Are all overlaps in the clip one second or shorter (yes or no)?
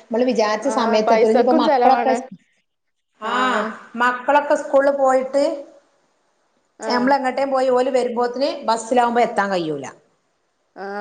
no